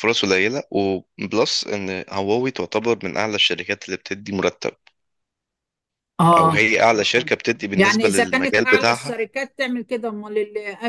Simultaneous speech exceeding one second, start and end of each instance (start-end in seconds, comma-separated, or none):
7.7-9.2